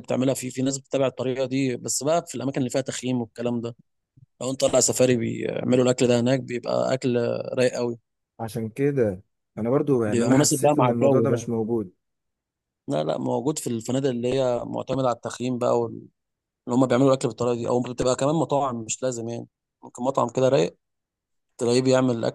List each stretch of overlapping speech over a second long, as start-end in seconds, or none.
10.1-11.5